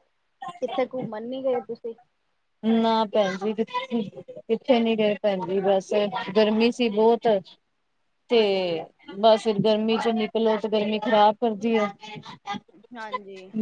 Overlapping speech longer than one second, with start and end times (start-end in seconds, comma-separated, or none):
none